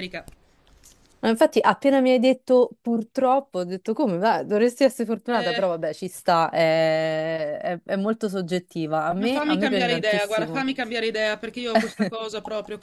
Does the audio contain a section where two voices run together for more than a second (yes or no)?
yes